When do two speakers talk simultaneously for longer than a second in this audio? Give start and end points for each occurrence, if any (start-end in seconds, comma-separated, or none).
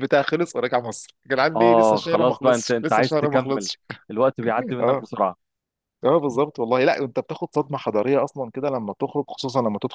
1.6-3.7